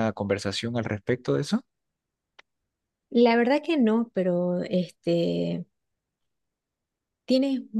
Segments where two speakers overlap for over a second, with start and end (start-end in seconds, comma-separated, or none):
none